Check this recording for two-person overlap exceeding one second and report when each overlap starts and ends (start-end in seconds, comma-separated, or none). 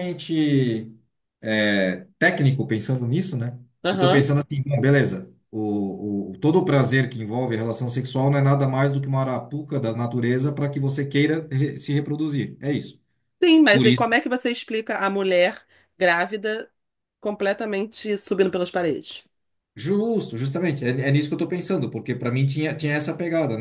none